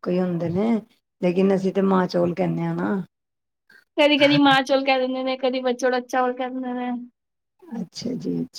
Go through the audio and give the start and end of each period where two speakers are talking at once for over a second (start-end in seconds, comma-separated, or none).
none